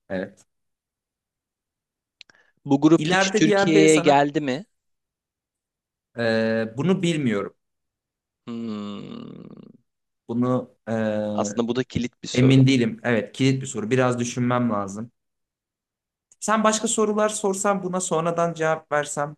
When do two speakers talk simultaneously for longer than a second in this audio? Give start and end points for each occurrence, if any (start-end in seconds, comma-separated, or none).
3.0-4.2